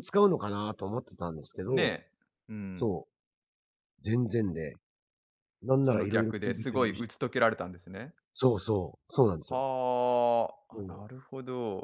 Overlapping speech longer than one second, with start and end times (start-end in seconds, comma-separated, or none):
5.8-7.0